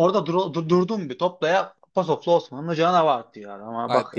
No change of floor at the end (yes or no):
no